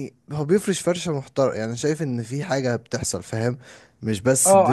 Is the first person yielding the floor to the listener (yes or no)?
yes